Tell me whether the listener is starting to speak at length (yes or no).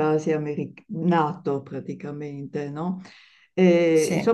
no